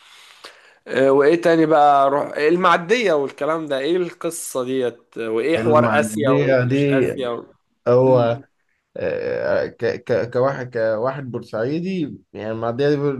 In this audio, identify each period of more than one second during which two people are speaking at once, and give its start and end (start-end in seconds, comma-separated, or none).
5.6-7.1